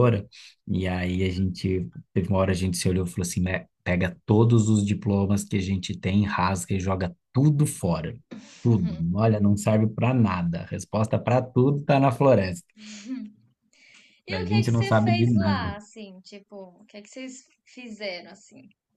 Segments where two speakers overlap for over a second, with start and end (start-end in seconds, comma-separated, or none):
14.3-15.8